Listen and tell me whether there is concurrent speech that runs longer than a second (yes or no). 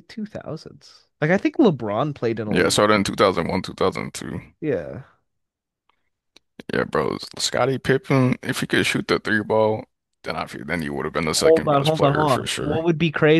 yes